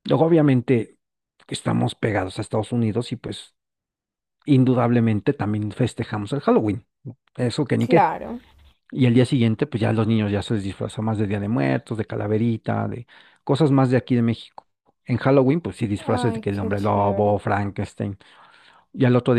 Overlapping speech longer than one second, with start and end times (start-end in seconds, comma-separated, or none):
16.1-17.4